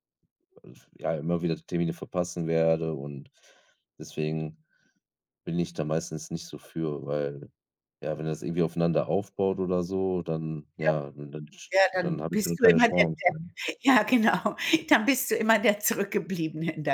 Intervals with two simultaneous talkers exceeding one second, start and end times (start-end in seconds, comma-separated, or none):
11.9-13.3